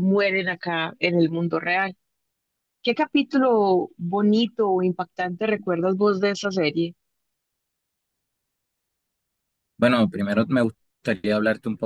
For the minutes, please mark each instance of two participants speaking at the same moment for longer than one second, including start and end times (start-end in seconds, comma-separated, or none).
none